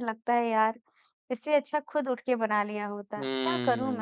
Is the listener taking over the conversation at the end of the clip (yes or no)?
yes